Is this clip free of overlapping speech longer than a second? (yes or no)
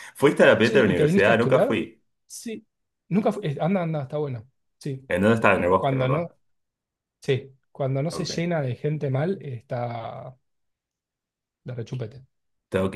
no